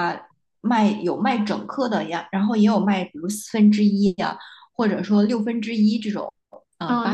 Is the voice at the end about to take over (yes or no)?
yes